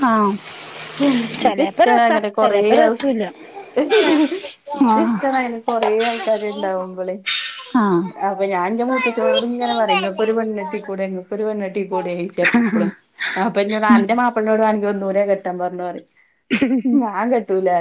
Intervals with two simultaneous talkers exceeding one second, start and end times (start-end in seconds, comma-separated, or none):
1.4-3.1